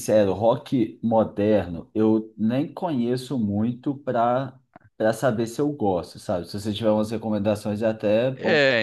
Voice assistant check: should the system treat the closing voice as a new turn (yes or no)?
yes